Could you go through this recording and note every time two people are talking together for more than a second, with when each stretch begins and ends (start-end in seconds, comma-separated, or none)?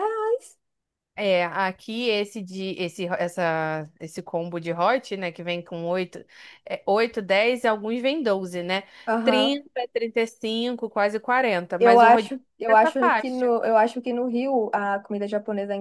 11.8-13.5